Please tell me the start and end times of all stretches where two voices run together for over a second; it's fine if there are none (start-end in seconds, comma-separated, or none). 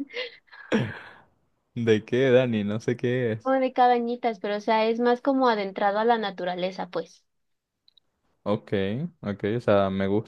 none